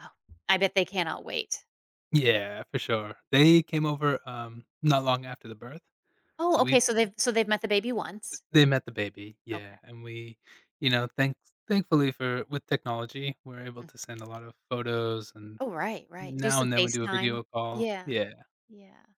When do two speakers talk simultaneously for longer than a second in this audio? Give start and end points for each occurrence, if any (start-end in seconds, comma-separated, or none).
16.2-18.1